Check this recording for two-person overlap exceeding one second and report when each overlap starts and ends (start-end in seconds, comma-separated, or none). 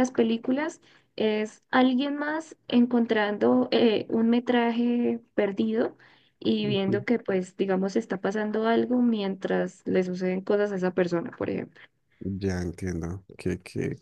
none